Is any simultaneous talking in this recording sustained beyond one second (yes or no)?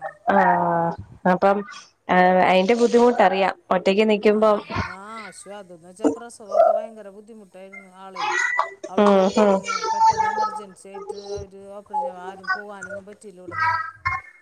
no